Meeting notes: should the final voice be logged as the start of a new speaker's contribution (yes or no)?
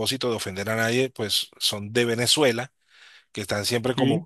no